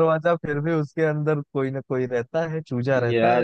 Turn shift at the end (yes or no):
yes